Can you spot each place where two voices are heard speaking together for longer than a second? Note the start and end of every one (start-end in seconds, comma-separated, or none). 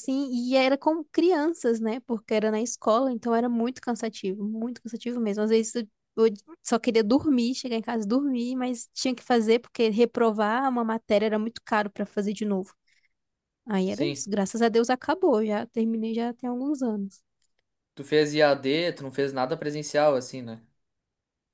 none